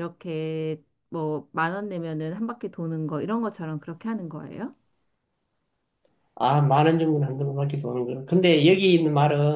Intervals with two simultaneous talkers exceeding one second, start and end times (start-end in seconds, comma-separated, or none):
none